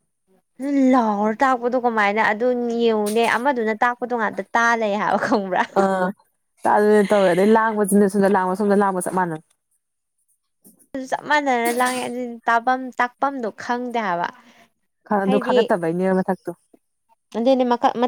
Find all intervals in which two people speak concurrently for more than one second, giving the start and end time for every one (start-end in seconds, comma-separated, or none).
none